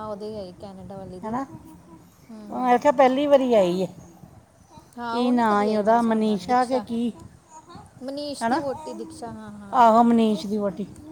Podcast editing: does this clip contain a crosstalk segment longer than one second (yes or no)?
yes